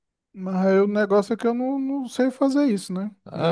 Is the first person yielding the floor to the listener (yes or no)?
yes